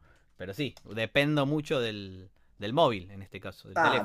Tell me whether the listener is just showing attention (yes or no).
no